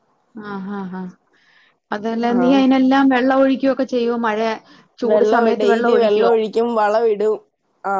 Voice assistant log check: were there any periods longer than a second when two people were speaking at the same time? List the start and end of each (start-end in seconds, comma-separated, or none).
none